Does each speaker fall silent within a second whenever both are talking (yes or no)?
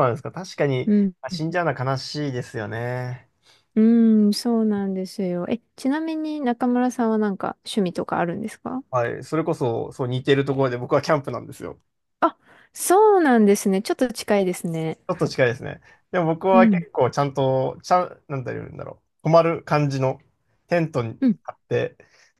yes